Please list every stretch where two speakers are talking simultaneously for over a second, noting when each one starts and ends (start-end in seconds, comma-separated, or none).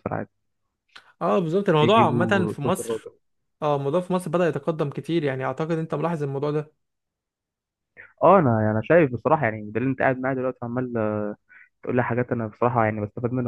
1.8-3.1